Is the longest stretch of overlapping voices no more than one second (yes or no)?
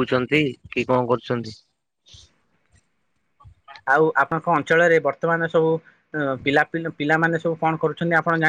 yes